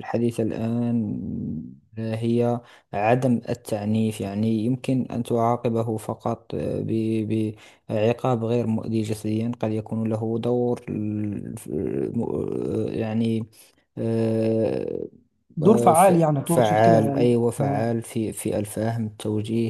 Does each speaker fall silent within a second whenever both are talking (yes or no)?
no